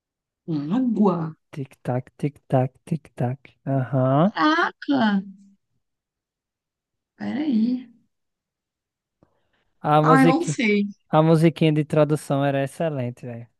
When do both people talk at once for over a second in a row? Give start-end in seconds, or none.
none